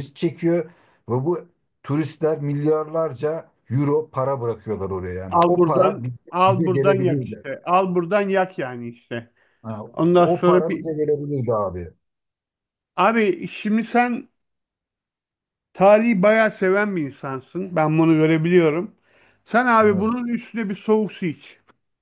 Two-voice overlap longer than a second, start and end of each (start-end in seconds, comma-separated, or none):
5.3-7.5